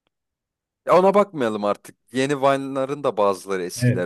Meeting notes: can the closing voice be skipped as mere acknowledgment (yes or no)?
no